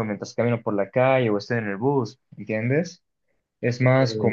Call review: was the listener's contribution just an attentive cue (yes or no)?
yes